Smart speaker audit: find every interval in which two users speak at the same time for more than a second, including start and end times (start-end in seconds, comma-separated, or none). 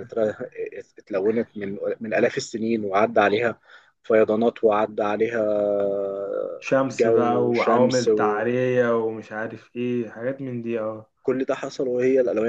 7.0-8.5